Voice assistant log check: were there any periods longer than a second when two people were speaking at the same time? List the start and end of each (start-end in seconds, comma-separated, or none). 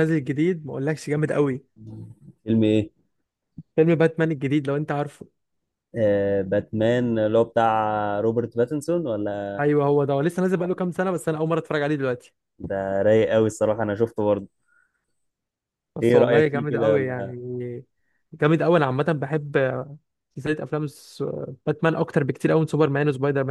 16.0-17.3